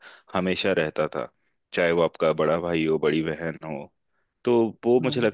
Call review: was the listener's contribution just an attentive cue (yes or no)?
yes